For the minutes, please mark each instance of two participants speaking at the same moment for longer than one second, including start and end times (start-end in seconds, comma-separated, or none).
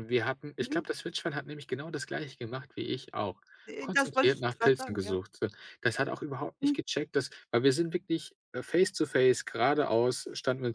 3.8-5.2